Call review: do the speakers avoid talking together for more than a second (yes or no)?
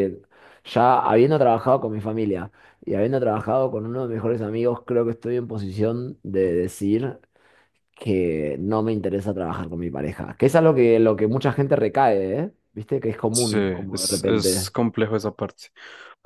no